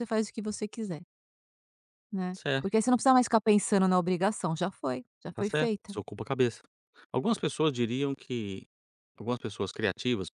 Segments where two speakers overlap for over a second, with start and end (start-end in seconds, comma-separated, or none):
none